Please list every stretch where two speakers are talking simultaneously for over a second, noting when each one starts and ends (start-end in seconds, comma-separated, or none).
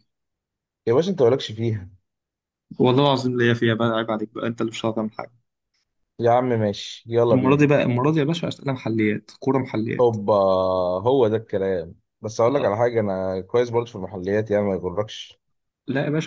none